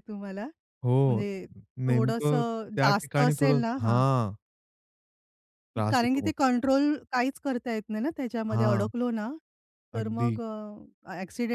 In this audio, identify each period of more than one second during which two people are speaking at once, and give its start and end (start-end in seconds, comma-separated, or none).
1.9-4.0